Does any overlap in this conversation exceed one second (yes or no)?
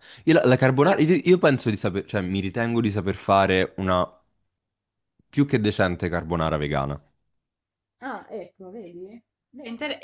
no